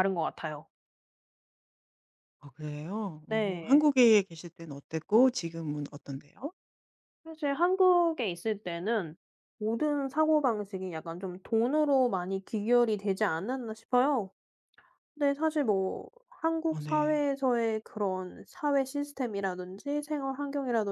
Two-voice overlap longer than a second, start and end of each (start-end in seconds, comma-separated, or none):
none